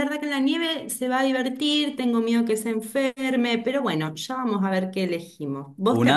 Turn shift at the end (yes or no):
no